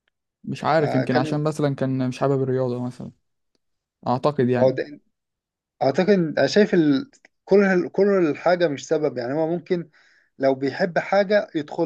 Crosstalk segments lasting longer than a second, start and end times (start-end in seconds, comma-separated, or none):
none